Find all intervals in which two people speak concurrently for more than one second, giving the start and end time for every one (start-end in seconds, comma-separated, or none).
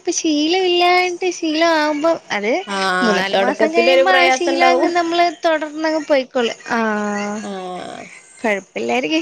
3.0-4.9